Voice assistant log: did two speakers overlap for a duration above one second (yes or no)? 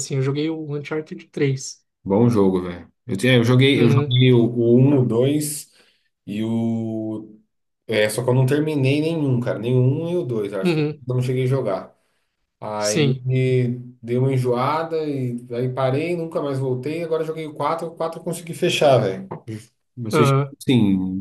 no